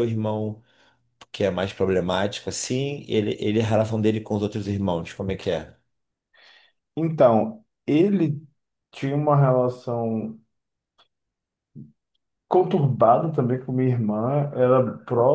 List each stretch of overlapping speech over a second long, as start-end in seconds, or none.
none